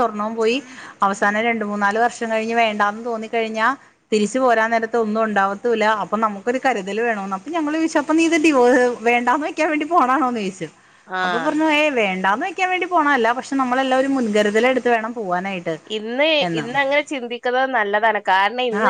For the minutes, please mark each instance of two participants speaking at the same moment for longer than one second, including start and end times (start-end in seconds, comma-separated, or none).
none